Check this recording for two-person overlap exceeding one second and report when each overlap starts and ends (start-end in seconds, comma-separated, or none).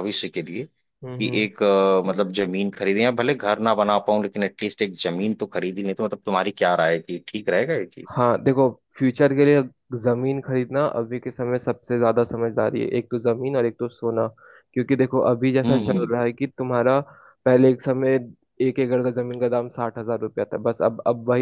none